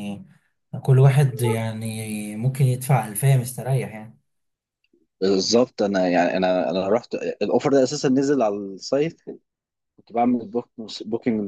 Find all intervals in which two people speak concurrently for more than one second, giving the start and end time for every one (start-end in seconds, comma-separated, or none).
none